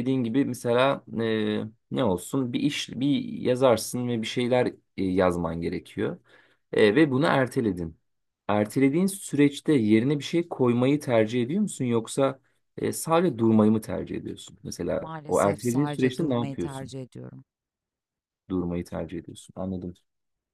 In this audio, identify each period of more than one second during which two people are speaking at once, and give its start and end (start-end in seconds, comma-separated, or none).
15.0-16.9